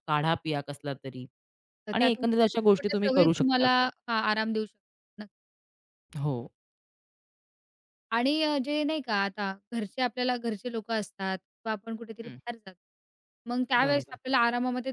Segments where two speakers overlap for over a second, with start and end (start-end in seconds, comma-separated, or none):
1.9-3.7